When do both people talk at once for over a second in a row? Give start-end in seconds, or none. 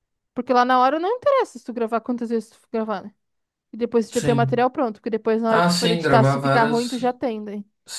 5.5-7.1